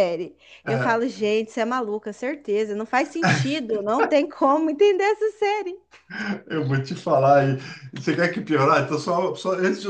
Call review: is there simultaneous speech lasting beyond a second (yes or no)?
no